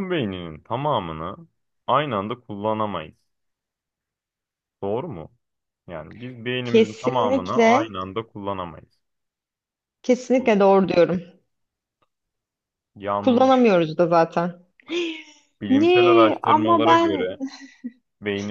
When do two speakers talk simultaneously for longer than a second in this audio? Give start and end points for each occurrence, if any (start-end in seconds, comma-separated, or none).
6.6-7.9, 15.7-17.3